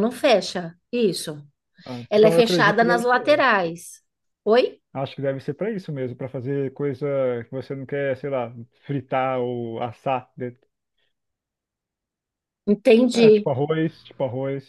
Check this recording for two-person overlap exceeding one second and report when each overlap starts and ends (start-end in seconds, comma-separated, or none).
2.1-3.4